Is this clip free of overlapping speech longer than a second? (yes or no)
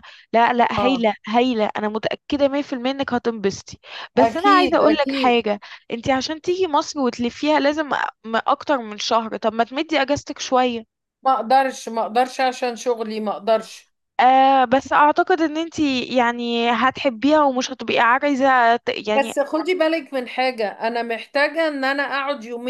no